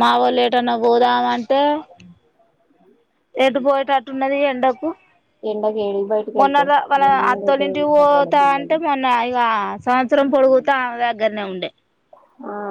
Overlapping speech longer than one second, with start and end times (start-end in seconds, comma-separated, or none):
6.4-8.8